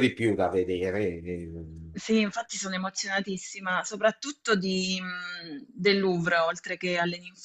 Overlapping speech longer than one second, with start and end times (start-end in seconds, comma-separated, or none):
none